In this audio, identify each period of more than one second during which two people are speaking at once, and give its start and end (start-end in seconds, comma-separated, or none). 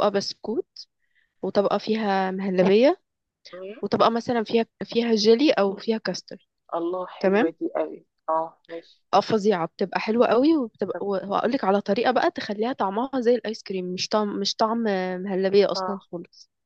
none